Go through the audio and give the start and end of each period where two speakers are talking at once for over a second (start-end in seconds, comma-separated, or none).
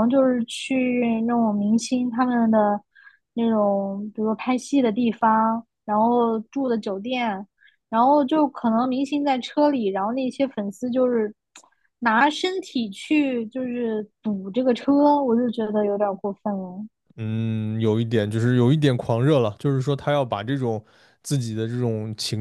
none